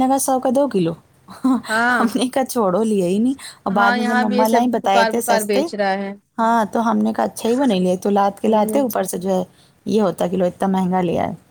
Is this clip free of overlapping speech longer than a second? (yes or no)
no